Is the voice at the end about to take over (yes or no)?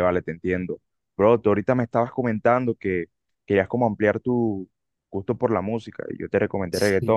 no